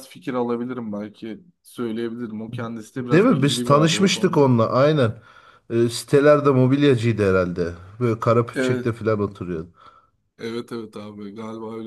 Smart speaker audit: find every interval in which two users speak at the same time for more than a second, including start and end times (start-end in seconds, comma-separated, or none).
3.0-4.5